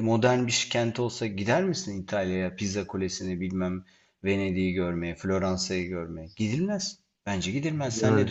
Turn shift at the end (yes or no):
yes